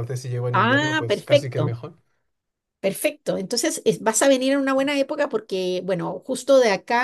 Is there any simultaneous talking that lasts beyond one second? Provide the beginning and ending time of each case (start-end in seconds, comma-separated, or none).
0.5-1.8